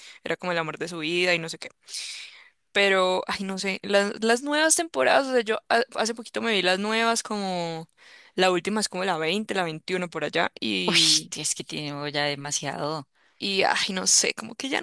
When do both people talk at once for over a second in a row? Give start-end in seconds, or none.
none